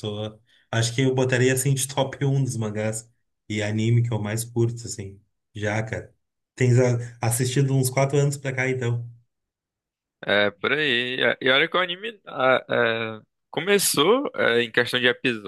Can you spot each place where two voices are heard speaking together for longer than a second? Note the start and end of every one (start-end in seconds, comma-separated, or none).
none